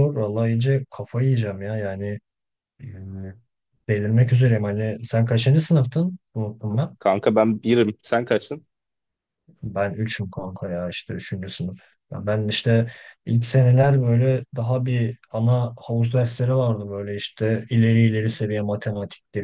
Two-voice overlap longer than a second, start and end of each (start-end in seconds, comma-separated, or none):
none